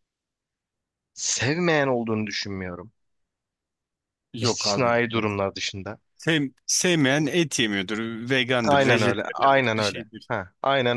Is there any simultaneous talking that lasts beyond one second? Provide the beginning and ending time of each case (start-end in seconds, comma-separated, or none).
8.6-10.3